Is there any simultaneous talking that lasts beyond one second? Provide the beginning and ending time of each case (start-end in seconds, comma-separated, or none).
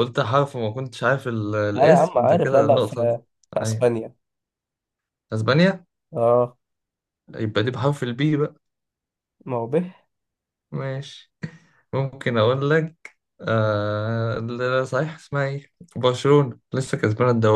1.7-3.0